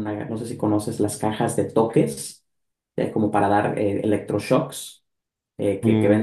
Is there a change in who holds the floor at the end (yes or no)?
yes